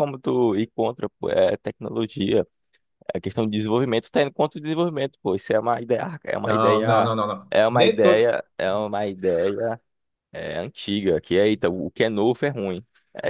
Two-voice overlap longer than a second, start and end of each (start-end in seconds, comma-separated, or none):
6.4-8.3